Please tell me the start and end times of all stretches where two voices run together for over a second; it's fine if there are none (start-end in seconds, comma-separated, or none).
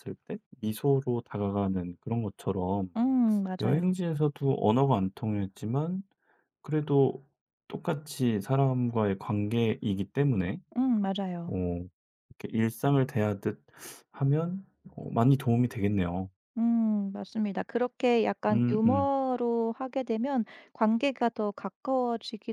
none